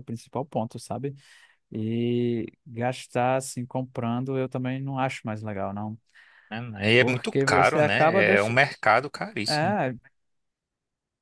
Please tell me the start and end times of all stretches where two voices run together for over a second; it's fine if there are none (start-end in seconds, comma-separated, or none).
7.0-8.6